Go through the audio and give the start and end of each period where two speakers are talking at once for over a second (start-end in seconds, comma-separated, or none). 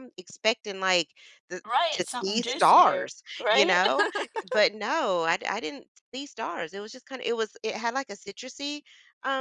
1.6-3.8